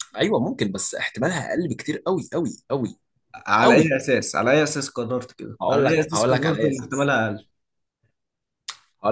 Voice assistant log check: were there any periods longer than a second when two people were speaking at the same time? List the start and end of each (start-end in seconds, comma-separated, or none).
5.6-7.1